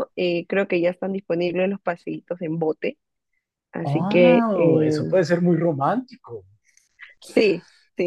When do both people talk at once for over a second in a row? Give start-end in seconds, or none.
3.8-5.2